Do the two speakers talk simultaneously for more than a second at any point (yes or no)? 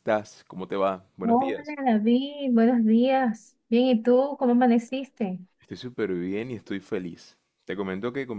no